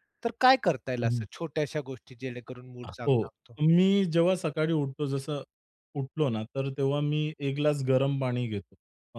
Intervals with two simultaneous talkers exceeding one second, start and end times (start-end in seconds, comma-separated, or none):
none